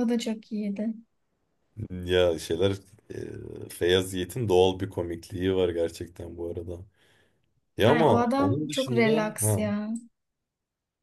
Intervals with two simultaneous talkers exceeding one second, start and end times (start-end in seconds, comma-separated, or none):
7.8-9.6